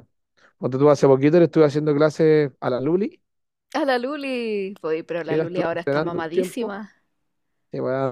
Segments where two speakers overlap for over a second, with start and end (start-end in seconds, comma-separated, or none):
5.2-6.8